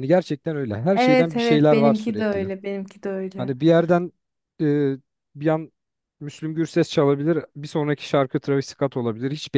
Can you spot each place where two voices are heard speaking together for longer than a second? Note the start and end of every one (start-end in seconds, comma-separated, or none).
0.9-2.5